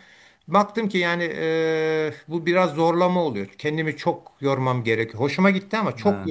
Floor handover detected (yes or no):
no